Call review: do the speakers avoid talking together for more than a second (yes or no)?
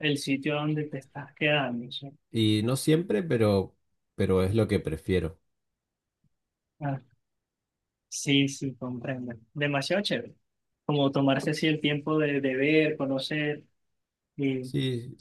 yes